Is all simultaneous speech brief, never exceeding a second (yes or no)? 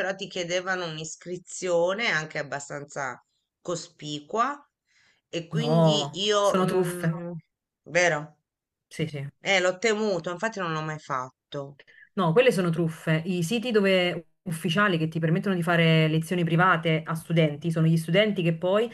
no